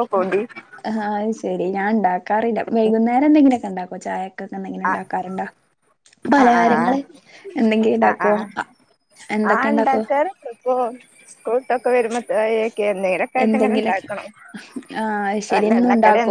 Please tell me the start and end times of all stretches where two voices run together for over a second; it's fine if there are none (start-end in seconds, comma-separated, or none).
none